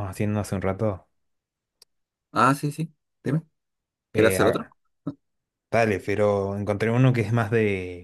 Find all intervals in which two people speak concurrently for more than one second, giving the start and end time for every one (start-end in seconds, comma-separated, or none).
none